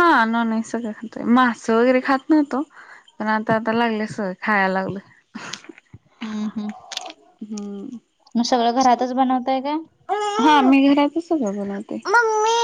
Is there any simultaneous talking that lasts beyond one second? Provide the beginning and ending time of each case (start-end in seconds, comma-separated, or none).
none